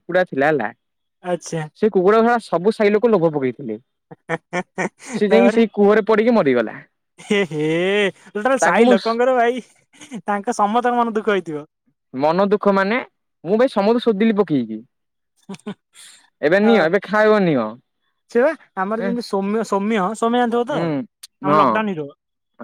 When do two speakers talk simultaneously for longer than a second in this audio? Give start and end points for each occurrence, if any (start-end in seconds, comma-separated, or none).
20.7-21.9